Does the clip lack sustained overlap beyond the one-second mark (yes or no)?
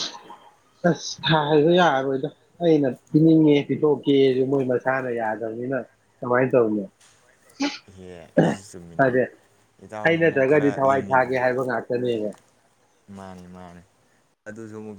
no